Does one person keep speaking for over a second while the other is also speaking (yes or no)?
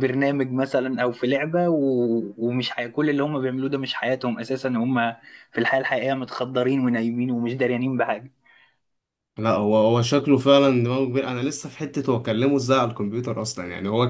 no